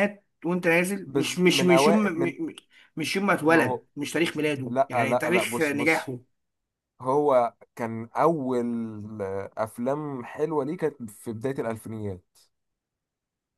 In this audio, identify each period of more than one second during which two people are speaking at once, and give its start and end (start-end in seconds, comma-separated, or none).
1.1-2.4, 4.7-6.1